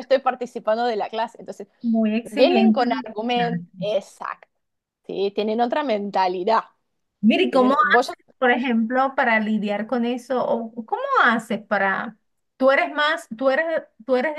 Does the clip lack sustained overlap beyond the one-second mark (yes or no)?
no